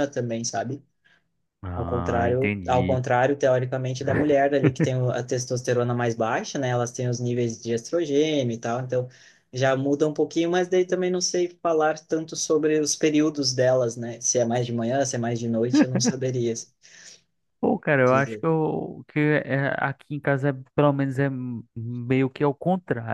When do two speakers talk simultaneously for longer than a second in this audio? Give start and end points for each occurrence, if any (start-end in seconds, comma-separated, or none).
1.7-3.0